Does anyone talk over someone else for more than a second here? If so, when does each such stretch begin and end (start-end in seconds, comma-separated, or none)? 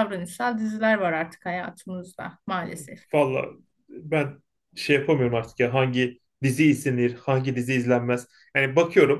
none